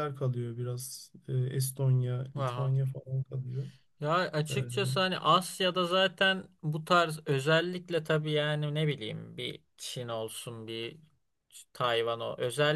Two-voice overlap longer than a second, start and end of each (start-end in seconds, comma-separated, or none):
none